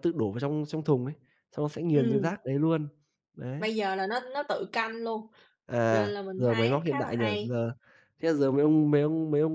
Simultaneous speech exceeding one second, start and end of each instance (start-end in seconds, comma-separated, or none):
5.9-7.6